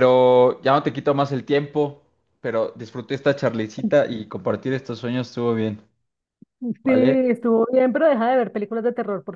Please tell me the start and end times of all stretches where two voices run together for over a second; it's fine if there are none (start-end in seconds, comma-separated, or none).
none